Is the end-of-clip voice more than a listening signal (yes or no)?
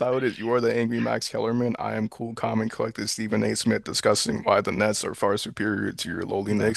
yes